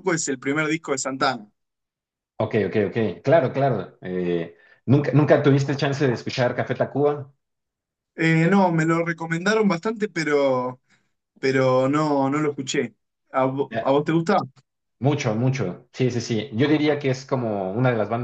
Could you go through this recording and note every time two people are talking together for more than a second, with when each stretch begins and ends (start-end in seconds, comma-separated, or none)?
none